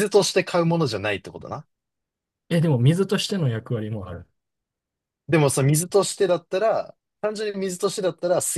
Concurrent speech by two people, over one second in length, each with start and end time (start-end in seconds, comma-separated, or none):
none